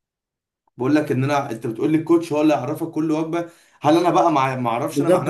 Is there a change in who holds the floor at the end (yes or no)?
yes